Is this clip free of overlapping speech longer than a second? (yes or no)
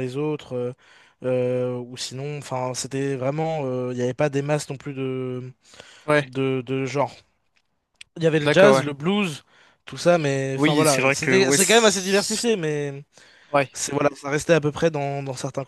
no